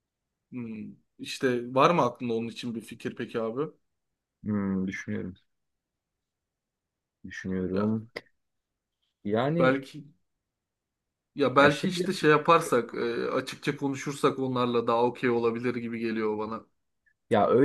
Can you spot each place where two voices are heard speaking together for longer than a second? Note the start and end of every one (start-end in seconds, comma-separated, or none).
none